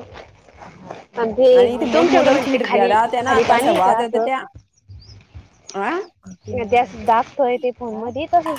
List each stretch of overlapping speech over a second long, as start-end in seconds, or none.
1.9-4.3